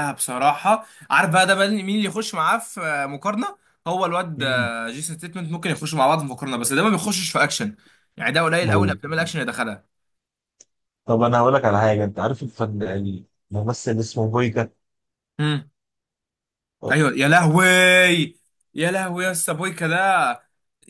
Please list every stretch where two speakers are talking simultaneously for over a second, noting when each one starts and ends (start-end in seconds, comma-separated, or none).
none